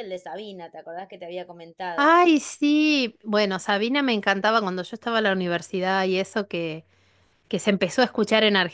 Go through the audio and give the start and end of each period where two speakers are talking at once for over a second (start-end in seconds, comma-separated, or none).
none